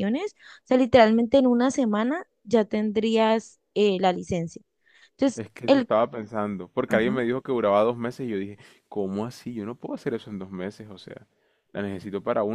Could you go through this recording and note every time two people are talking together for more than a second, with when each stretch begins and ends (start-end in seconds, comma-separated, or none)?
none